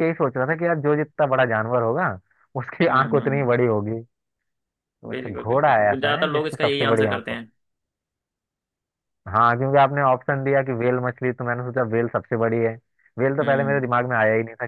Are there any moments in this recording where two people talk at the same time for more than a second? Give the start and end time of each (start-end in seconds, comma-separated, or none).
5.1-7.2